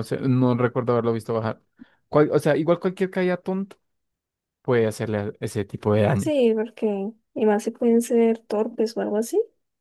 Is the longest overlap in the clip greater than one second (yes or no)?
no